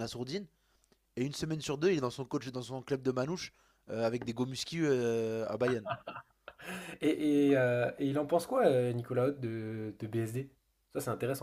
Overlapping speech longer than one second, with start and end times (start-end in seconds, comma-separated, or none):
none